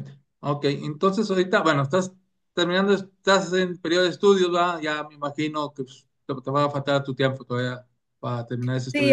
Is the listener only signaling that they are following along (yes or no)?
no